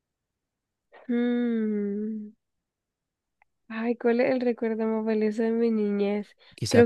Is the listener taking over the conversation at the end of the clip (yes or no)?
yes